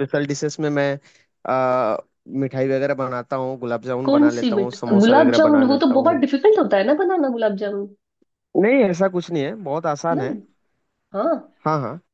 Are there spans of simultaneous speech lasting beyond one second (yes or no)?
yes